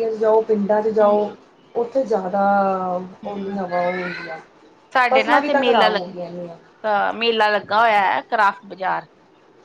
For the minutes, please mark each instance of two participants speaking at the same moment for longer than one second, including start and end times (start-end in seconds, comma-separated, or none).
5.1-6.5